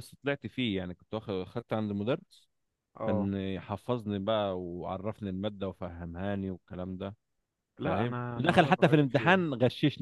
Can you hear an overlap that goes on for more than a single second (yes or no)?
yes